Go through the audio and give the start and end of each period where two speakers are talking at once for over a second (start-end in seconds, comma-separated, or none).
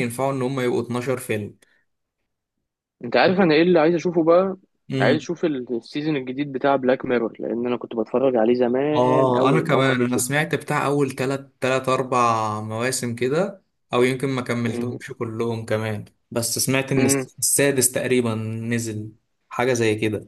8.9-10.2